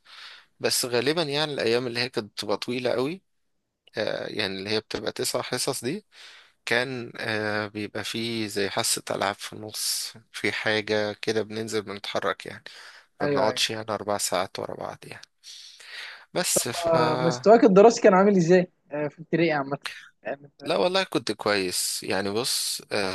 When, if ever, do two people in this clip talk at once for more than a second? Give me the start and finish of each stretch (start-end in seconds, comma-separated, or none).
none